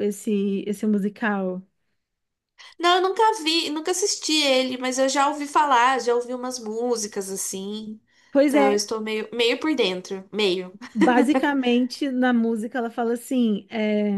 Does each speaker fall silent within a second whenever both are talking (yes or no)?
yes